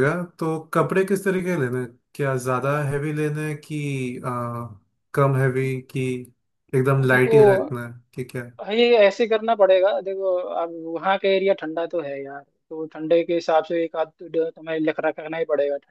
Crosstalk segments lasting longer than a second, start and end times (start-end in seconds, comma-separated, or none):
none